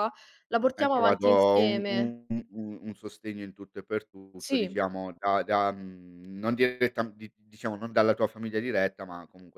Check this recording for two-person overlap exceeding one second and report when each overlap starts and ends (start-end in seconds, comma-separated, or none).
0.8-2.1